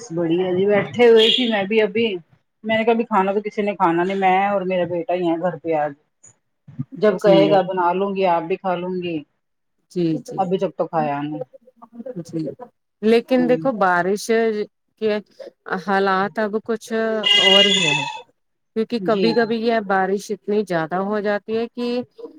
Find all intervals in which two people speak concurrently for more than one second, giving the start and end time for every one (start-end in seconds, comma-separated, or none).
none